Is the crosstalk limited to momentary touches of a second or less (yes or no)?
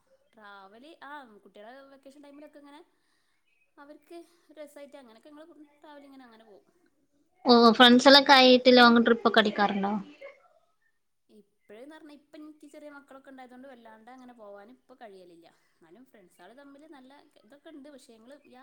yes